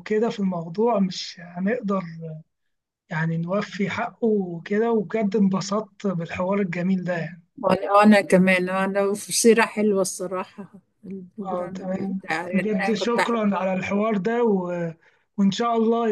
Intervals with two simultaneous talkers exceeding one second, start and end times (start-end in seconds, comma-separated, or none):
11.5-13.7